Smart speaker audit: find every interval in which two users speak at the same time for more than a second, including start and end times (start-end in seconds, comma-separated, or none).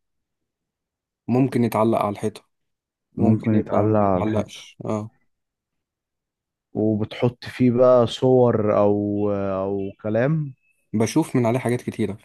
3.2-4.7